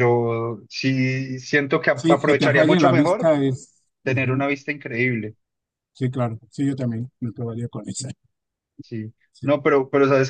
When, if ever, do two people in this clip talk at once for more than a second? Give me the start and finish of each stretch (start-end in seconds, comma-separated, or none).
2.0-3.3